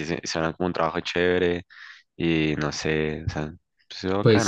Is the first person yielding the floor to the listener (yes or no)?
yes